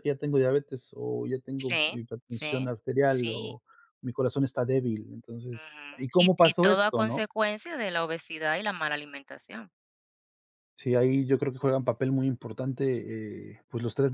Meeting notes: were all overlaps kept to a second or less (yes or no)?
no